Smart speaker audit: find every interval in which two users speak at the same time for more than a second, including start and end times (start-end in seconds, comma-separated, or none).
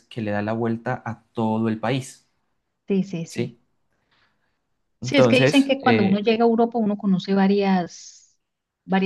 5.0-6.2